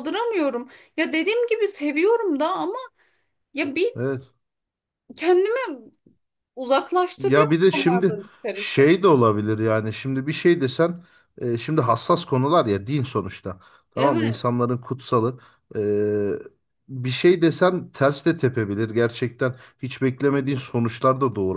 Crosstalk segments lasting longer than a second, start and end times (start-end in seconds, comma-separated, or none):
7.2-8.9